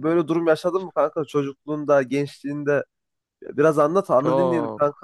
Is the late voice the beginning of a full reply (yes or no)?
yes